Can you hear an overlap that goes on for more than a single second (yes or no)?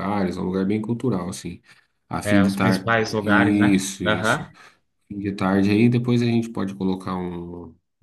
yes